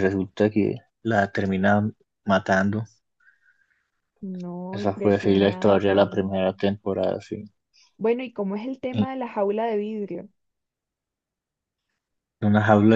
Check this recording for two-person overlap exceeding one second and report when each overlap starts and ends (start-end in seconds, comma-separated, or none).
4.7-6.2